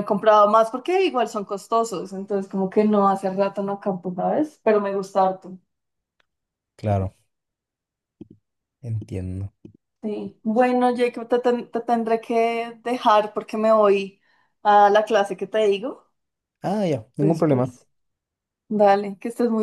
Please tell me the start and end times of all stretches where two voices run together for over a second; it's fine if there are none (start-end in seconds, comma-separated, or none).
none